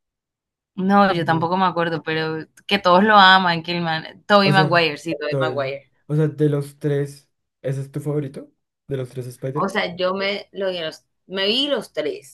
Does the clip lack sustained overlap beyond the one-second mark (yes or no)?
no